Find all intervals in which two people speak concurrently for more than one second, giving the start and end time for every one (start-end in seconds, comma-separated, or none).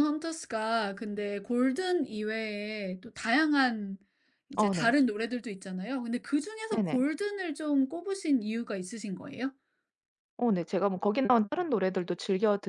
none